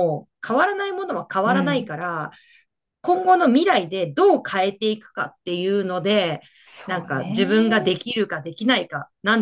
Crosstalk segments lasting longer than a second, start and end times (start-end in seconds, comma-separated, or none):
6.9-8.1